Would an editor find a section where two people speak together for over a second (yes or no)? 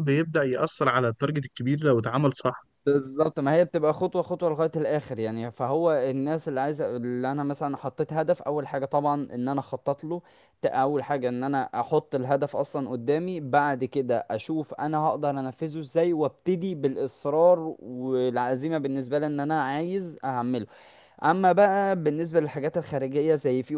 no